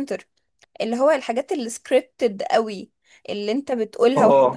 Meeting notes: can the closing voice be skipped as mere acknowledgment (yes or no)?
yes